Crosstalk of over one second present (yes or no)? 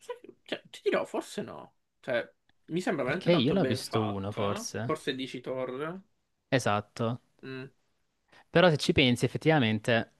yes